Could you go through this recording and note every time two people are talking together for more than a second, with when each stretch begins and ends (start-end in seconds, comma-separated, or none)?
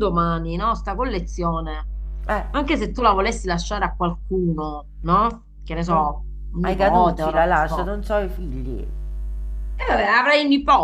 5.8-7.9